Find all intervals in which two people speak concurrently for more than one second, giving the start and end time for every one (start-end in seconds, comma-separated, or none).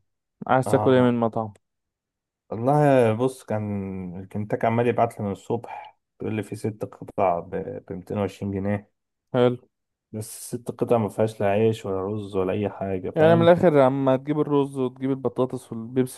none